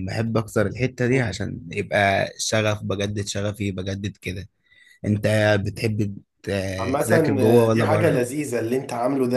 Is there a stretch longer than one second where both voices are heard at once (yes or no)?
yes